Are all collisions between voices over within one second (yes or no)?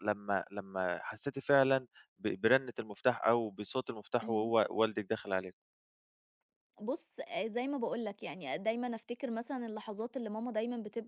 yes